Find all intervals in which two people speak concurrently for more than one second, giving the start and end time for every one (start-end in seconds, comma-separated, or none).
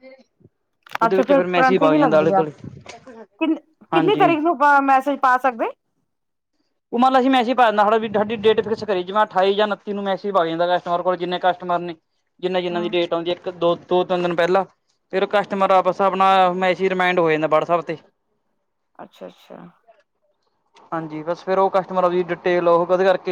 1.1-2.4